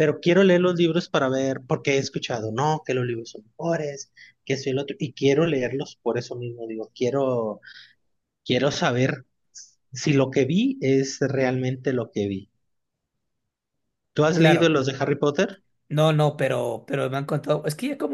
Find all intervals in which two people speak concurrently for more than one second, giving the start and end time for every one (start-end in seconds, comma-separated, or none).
none